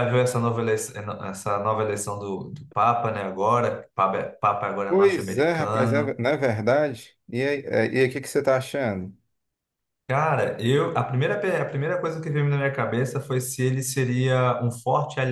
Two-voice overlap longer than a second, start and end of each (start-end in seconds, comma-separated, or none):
4.9-6.2